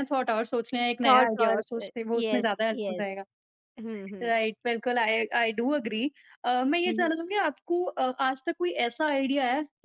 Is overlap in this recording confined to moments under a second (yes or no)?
no